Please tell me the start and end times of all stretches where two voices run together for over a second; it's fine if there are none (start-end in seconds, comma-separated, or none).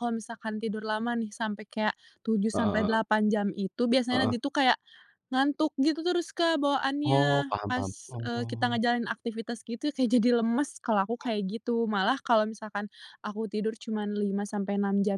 7.0-8.8